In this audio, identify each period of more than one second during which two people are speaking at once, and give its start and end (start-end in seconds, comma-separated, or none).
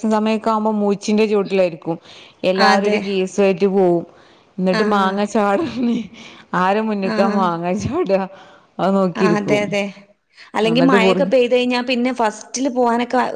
none